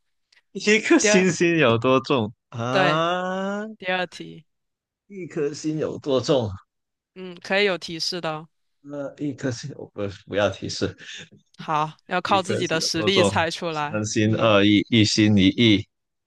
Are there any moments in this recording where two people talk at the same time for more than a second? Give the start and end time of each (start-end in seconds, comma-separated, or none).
12.2-14.6